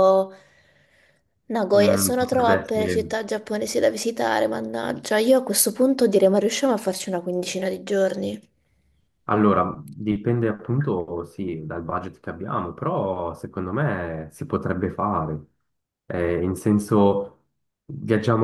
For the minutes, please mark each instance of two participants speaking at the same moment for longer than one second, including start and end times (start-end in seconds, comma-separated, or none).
1.7-3.1